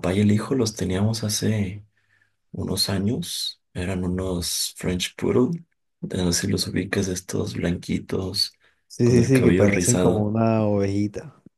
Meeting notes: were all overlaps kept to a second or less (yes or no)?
no